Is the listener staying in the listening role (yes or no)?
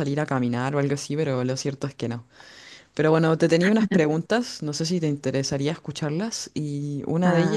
yes